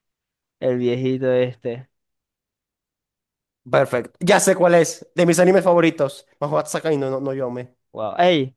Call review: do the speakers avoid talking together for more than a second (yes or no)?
yes